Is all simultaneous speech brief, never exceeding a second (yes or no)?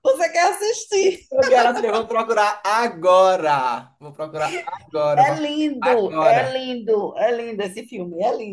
no